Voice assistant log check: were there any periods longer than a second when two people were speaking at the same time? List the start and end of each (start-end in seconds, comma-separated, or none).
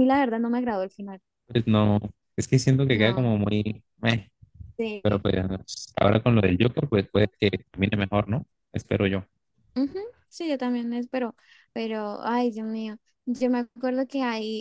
none